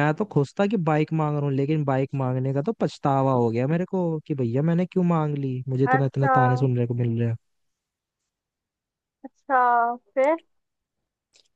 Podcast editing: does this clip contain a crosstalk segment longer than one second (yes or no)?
no